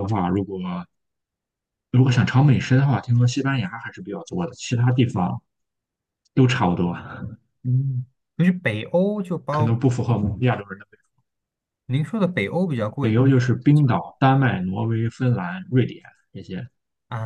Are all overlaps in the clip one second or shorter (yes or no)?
yes